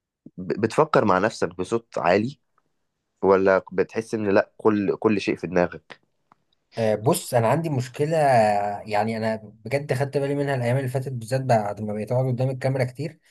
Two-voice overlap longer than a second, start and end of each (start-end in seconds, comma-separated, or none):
none